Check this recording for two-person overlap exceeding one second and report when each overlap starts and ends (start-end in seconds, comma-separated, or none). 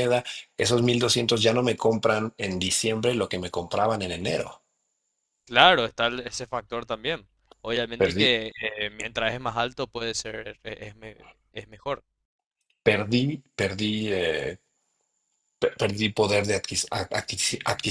none